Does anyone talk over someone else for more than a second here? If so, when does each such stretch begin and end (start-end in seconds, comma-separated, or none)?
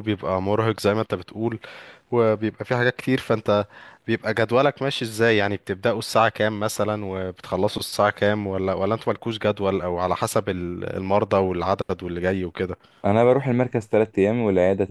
none